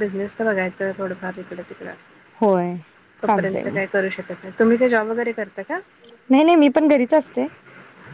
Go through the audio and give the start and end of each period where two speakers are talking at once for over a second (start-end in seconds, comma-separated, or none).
none